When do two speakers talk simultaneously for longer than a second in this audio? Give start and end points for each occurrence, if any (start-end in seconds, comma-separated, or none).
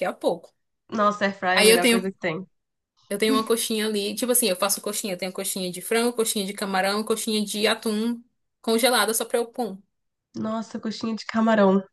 none